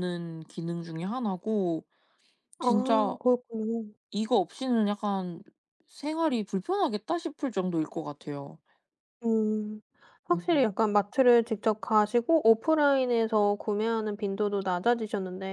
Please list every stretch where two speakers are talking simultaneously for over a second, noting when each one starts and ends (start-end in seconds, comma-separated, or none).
none